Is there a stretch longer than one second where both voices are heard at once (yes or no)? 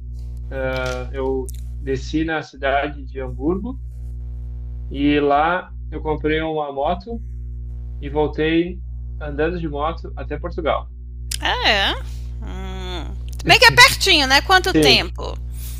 no